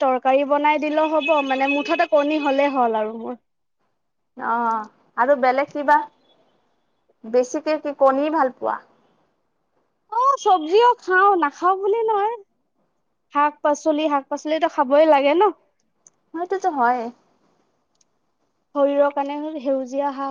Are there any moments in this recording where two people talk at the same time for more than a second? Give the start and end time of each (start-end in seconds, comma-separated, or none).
none